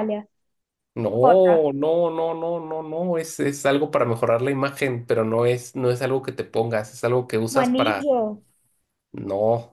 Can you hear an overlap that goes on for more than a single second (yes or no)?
no